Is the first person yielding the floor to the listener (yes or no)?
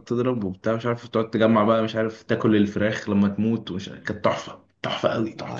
yes